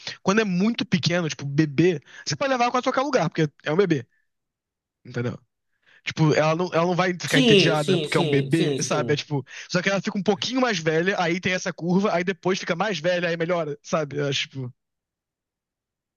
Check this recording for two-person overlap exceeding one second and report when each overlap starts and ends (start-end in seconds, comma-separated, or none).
7.3-9.3